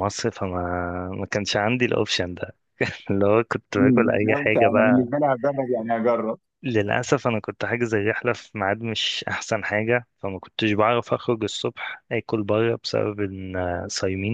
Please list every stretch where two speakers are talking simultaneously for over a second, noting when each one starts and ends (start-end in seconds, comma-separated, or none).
3.8-5.1